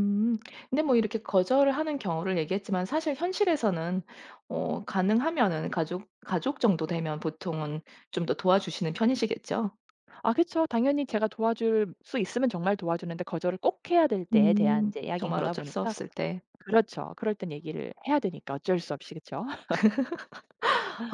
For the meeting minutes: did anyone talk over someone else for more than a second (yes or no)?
yes